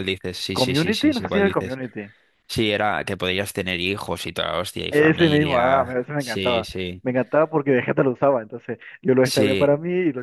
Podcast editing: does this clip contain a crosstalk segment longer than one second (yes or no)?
yes